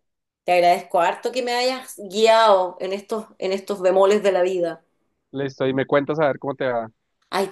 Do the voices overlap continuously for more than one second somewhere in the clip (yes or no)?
no